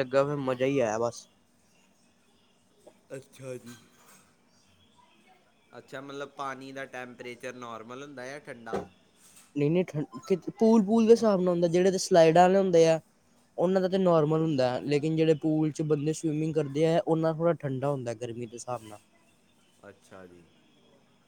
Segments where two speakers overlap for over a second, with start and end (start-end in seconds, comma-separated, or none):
none